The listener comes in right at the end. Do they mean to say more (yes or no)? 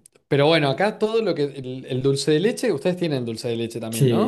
yes